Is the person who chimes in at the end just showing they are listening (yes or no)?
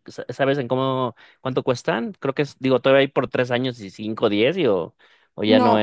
no